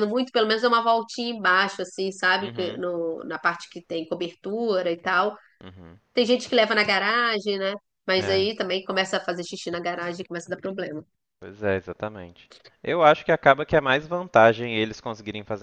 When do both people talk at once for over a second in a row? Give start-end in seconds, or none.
none